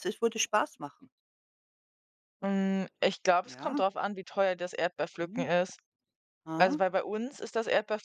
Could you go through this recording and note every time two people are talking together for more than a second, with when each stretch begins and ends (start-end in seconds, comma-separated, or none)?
none